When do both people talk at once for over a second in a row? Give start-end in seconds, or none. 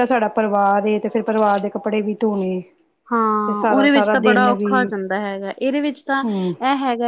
3.5-4.8